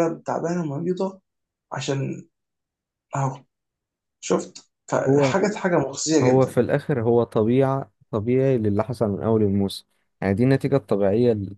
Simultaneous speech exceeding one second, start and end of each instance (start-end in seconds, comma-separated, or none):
none